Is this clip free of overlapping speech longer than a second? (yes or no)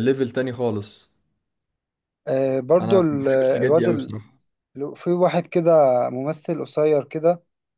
no